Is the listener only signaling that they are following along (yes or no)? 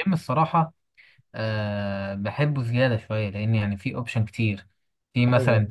yes